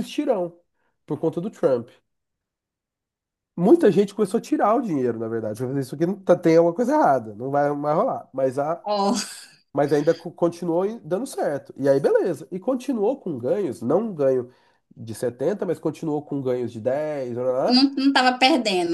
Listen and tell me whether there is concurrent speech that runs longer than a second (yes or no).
no